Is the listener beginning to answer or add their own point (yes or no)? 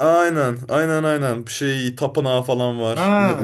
yes